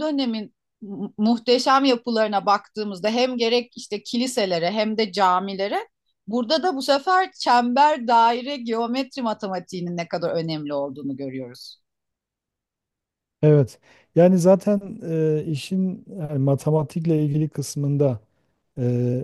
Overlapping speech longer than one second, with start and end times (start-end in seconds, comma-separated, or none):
none